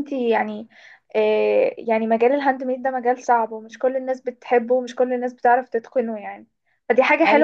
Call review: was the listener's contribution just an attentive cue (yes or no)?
yes